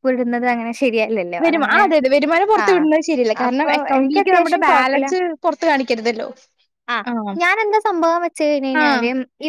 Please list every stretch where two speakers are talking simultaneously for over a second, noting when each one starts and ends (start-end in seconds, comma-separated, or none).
3.5-5.0